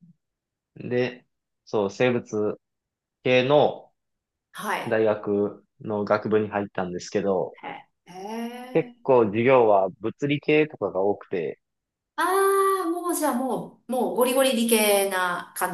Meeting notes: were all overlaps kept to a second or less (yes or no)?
yes